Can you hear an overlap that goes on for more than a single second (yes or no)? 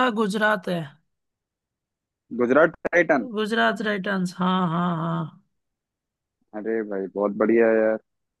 no